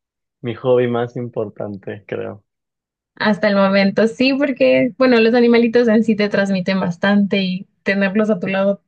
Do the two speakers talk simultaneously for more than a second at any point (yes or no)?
no